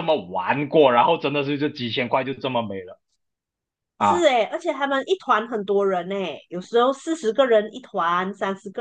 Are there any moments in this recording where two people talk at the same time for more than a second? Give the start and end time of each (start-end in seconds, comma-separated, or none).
none